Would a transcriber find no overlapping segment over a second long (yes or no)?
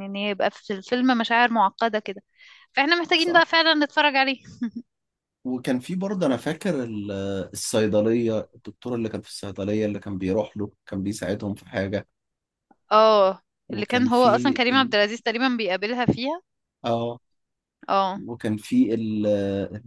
no